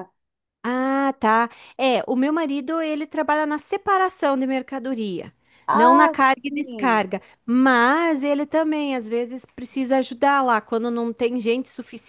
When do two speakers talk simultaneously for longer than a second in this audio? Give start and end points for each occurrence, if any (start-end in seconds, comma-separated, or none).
5.7-7.1